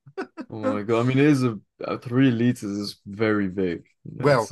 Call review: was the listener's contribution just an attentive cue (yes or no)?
no